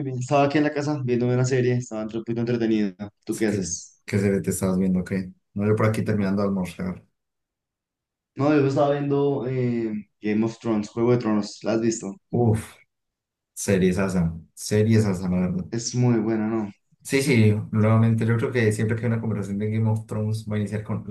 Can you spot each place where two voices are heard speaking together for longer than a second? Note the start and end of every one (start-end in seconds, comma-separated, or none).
none